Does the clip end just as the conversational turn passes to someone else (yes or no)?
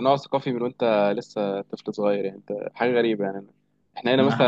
yes